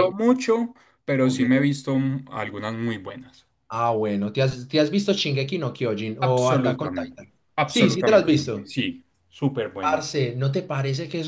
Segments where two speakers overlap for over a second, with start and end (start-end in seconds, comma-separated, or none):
6.2-8.7